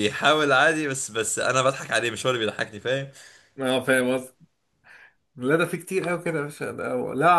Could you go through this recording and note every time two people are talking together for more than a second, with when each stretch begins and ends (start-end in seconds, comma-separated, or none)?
none